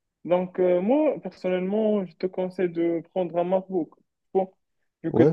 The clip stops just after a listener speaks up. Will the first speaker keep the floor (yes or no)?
yes